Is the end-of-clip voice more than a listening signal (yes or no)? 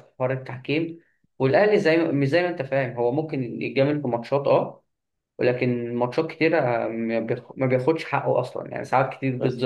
yes